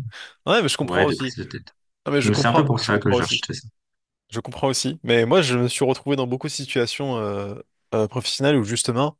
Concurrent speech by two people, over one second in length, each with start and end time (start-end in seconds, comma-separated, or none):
2.2-3.5